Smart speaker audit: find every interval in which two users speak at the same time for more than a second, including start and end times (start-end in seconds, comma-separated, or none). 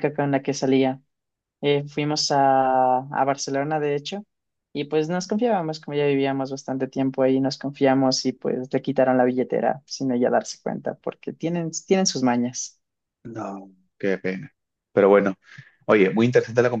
none